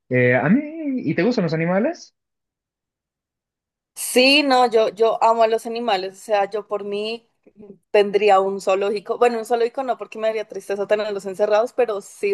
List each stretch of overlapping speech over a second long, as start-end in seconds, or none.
none